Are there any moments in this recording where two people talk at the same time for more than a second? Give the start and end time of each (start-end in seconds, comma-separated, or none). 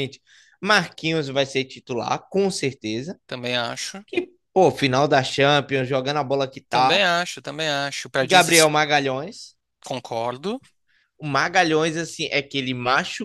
none